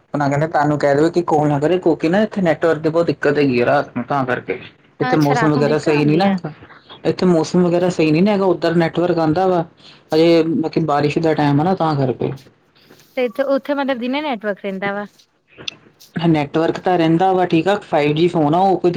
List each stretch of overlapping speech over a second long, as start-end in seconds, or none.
5.1-6.4